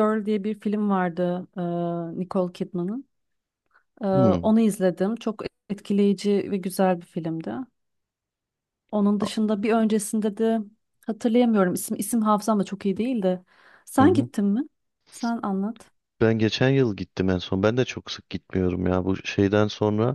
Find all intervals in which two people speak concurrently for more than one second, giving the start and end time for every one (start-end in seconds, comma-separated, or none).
none